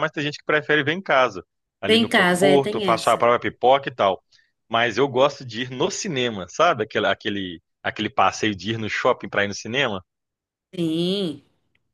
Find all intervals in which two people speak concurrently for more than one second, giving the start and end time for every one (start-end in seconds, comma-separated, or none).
1.8-3.2